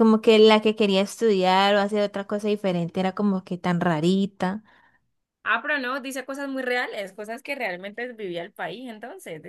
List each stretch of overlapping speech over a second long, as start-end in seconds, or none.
none